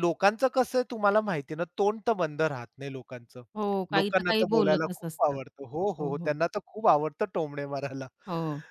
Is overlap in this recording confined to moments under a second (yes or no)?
no